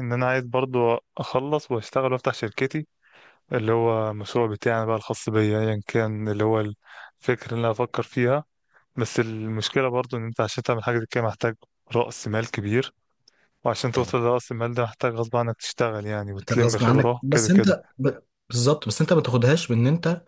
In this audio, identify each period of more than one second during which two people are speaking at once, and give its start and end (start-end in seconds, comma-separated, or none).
16.4-17.8